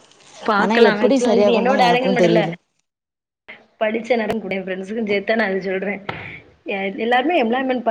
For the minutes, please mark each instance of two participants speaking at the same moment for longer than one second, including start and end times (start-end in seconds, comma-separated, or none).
0.6-2.4